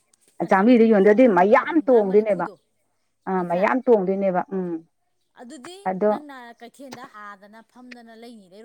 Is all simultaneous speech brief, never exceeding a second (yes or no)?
no